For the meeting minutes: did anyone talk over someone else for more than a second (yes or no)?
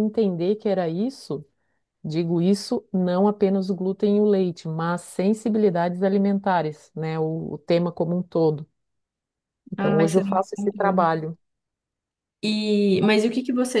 yes